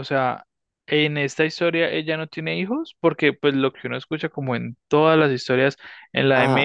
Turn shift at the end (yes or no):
no